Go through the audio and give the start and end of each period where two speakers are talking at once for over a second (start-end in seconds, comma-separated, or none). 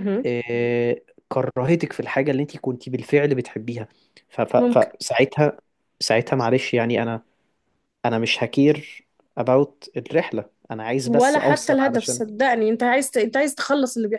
11.0-12.2